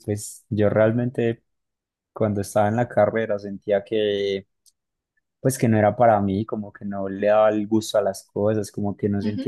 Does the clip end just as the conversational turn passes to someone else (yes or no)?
no